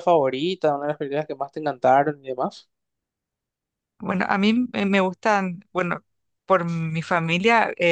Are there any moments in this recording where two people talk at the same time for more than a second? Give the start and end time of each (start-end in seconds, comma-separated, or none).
none